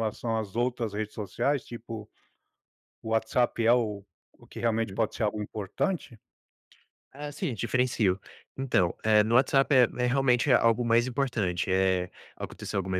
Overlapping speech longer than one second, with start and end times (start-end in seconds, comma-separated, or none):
none